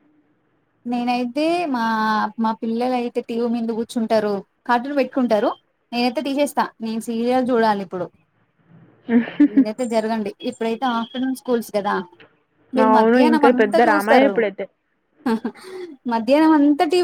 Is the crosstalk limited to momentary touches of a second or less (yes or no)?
no